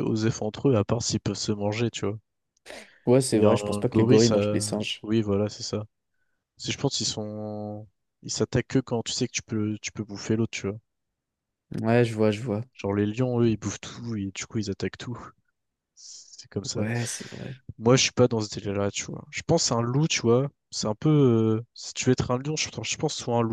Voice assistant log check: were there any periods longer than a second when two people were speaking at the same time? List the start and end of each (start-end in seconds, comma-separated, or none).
3.3-5.0